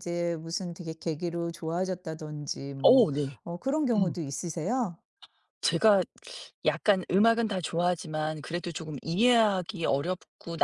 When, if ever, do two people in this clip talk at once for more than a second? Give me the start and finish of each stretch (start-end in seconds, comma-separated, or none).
none